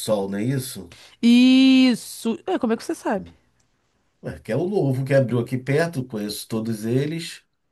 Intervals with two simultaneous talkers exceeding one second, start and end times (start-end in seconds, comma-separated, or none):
none